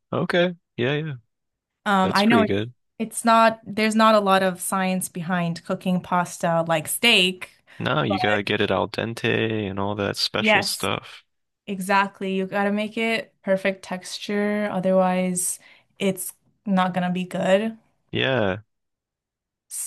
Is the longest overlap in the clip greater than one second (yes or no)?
no